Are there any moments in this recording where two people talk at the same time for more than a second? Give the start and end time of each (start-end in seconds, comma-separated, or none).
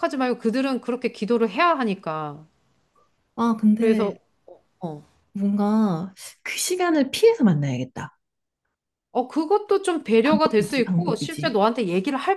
10.2-11.6